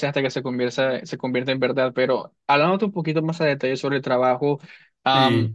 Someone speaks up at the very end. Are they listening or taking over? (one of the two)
listening